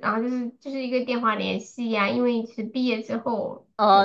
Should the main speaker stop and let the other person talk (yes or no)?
yes